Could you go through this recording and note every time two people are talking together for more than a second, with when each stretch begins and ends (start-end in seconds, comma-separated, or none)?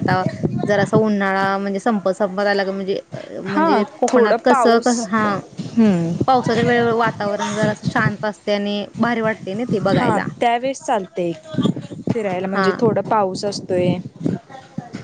3.4-5.1